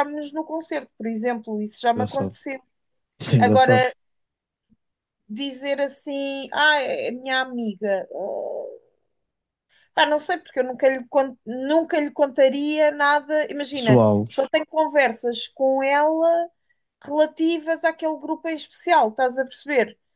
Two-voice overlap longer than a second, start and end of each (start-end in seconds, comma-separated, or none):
none